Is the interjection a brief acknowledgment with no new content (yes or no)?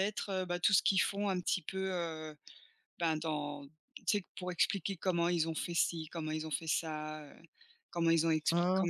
yes